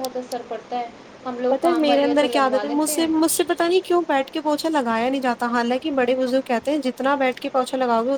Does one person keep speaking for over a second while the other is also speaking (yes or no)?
yes